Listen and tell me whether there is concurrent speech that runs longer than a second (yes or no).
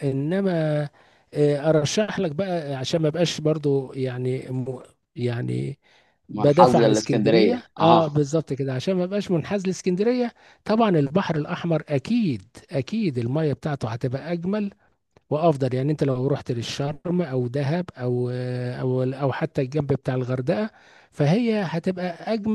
yes